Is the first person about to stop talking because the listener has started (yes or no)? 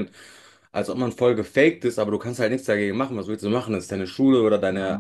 yes